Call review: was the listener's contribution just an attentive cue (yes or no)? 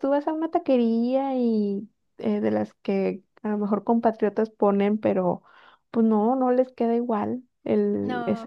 no